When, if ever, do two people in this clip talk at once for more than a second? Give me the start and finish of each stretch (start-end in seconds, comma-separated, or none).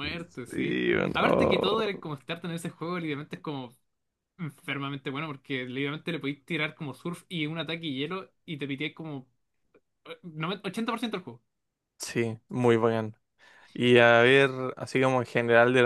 0.5-1.9